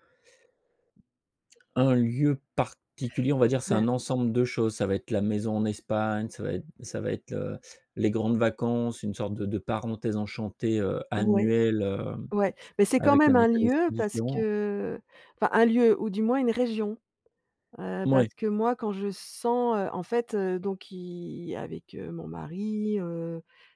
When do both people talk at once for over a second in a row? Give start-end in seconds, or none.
13.0-14.5